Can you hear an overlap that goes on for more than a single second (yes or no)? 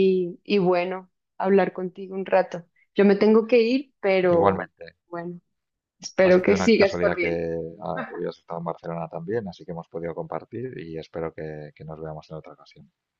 yes